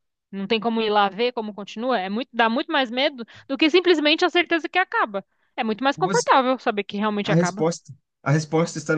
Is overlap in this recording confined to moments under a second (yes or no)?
yes